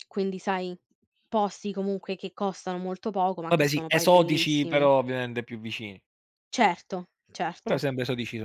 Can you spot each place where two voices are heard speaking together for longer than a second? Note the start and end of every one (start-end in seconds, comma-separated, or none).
3.5-4.9